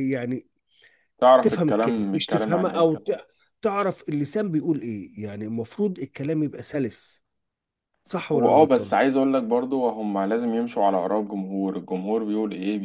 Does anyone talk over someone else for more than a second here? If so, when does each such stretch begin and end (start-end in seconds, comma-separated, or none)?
1.4-2.9